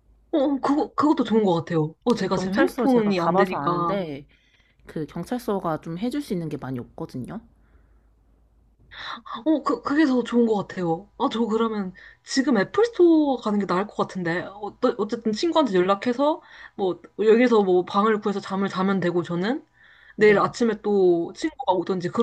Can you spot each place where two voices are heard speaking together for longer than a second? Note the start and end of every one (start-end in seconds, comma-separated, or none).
2.1-4.0